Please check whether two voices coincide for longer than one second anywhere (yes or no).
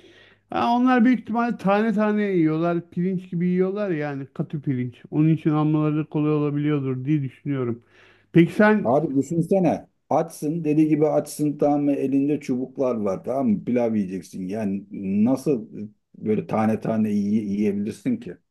no